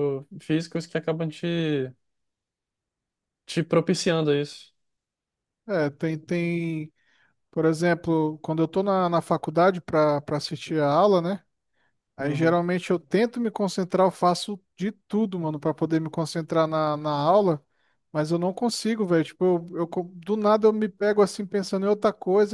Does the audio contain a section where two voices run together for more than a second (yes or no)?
no